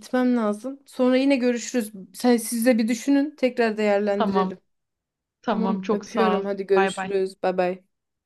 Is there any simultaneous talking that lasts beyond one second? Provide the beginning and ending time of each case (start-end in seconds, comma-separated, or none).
5.5-7.1